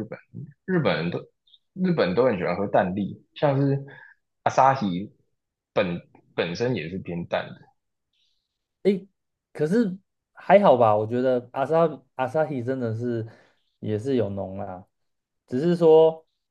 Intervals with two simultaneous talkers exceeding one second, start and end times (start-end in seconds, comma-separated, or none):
none